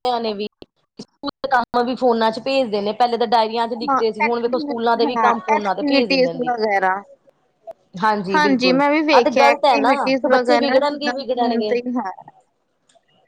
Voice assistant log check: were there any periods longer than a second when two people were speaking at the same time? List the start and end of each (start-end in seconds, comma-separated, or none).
3.9-6.5, 8.8-11.8